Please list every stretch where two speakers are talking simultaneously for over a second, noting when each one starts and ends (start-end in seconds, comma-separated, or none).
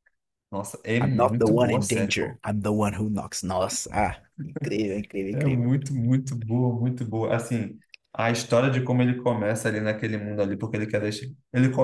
1.0-2.4